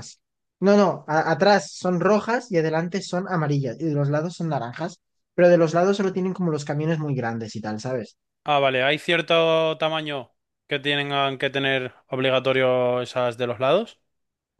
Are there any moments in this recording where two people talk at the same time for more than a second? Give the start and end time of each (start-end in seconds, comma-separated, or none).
none